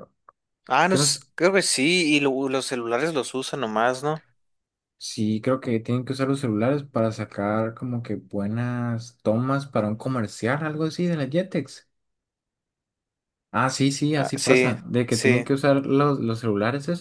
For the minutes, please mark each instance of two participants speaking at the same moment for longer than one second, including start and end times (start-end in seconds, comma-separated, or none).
14.1-15.6